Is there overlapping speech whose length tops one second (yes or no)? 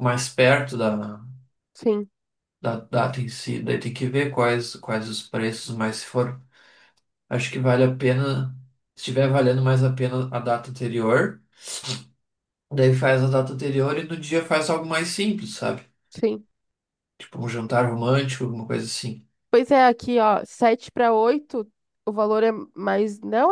no